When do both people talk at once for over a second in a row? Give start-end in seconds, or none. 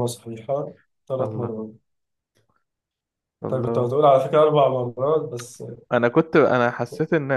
none